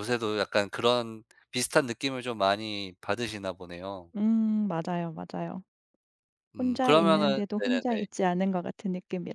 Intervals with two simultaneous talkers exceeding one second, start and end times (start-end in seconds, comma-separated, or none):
6.6-7.8